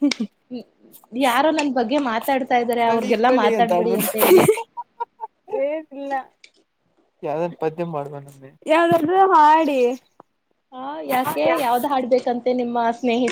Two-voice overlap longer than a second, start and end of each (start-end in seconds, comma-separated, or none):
none